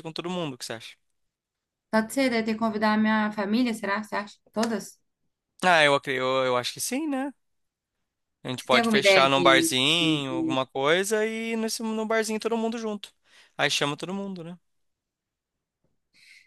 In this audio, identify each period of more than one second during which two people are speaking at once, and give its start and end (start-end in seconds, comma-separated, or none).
8.6-10.6